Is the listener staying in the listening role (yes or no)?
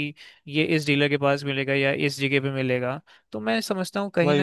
yes